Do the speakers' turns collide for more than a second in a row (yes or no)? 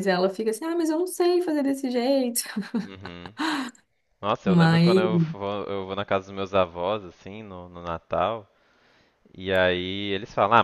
no